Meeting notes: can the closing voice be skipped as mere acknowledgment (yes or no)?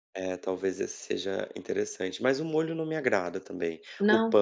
yes